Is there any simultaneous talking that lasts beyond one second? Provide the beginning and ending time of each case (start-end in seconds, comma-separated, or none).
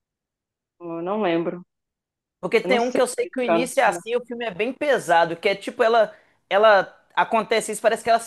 2.6-4.1